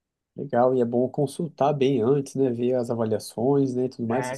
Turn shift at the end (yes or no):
yes